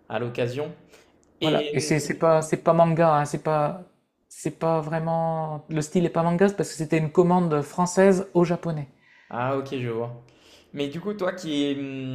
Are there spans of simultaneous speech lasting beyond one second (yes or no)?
no